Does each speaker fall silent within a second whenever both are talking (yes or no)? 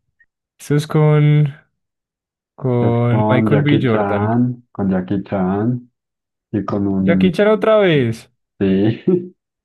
no